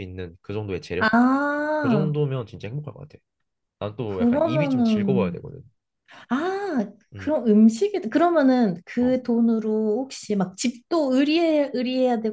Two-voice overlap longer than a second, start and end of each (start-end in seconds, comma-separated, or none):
4.0-5.4